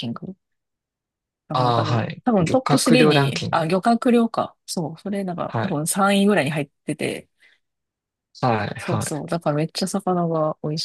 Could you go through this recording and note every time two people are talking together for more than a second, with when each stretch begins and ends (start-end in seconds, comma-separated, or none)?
1.5-3.7